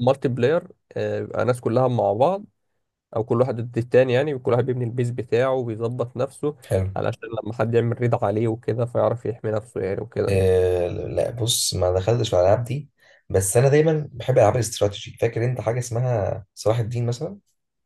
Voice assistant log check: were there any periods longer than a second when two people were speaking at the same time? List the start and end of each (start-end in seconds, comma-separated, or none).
none